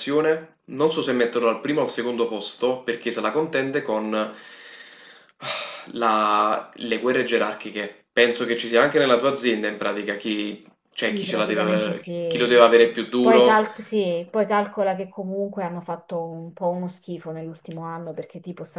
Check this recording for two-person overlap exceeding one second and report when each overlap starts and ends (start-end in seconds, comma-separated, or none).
11.1-12.5